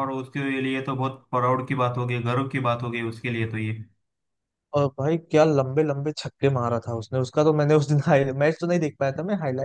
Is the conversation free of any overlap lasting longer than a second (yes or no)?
yes